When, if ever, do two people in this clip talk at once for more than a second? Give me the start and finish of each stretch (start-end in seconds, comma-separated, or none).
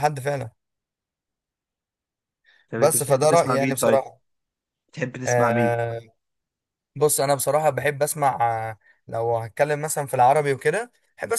2.8-4.0